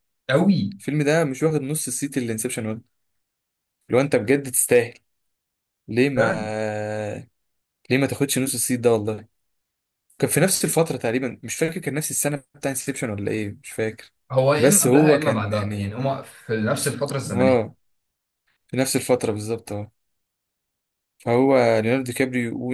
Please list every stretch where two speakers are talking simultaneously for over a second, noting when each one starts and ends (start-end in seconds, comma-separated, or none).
14.6-16.0